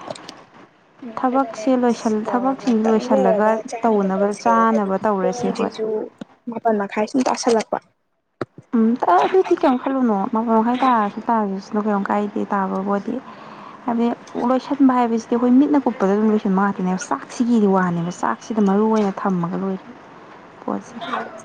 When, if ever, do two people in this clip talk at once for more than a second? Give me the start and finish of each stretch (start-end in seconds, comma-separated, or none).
2.3-5.7